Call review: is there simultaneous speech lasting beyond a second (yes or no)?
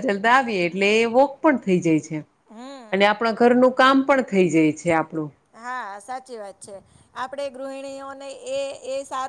no